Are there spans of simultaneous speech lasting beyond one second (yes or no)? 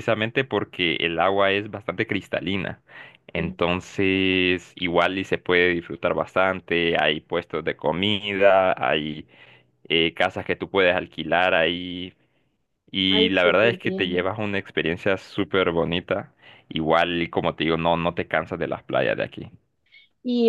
yes